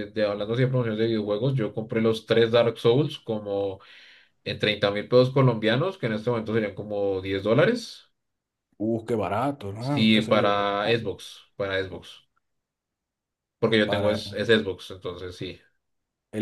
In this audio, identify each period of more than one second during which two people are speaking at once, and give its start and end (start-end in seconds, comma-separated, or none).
9.8-11.1